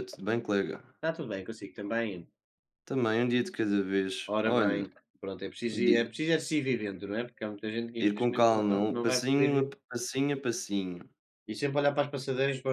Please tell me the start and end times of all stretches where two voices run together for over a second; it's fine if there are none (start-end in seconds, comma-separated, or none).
8.0-9.8